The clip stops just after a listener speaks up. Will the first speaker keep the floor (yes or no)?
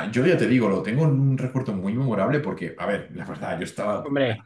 yes